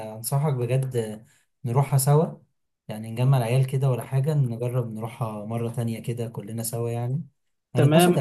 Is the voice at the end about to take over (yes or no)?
yes